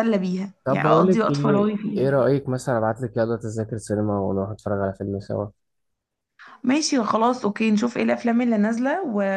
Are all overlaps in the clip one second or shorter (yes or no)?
no